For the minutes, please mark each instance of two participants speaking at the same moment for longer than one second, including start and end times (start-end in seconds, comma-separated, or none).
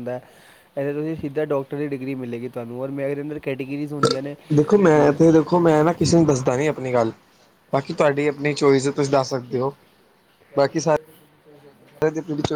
none